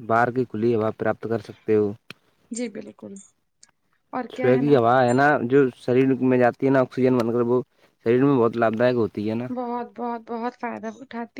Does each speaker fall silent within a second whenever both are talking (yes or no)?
yes